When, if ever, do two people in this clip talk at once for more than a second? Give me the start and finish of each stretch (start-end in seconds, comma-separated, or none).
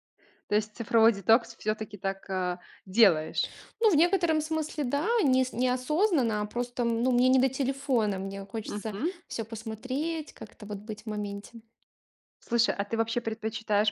none